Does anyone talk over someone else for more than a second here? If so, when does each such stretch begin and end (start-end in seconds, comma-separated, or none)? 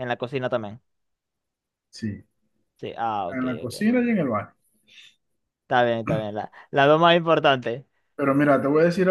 none